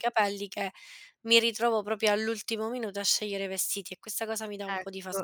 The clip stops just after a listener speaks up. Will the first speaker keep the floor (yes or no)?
no